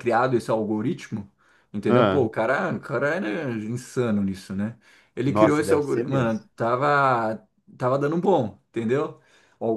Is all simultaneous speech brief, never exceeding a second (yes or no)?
no